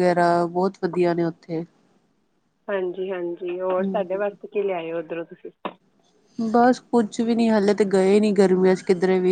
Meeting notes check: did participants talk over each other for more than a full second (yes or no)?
no